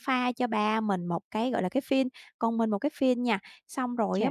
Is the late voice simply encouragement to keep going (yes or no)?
yes